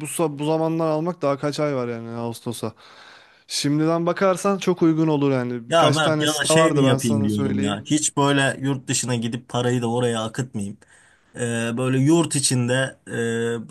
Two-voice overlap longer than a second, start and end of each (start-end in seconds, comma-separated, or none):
5.7-7.8